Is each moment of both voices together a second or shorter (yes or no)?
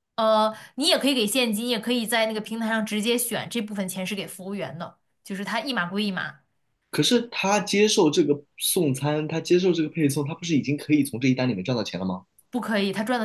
yes